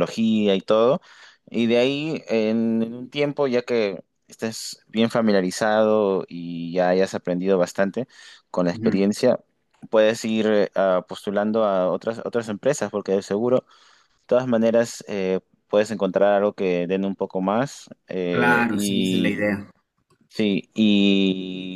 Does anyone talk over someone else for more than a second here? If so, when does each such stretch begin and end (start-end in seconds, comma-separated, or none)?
18.3-19.5